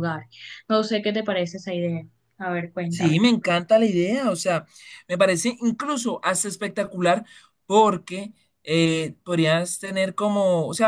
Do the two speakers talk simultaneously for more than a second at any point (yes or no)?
no